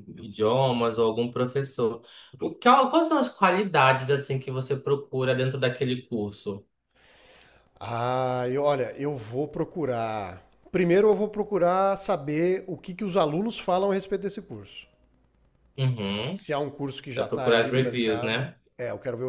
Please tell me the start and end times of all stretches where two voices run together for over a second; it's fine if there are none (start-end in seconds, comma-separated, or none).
17.1-18.6